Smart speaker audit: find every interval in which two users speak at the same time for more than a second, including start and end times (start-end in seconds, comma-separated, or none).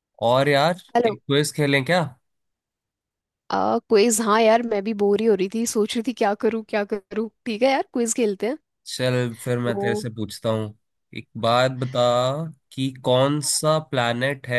none